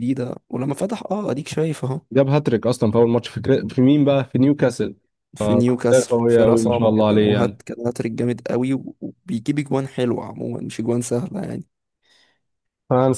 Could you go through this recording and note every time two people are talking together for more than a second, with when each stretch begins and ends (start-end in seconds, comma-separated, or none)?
5.9-7.6